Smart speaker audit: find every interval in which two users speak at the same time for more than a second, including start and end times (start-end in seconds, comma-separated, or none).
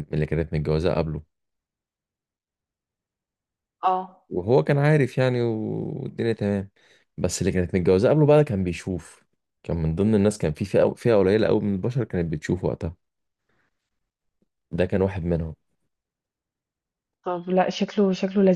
none